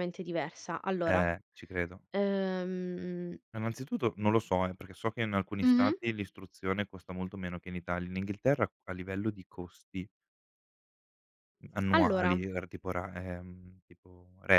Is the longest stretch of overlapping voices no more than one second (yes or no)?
yes